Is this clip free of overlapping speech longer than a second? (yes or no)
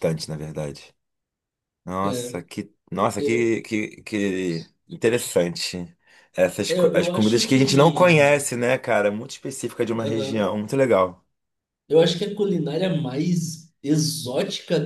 no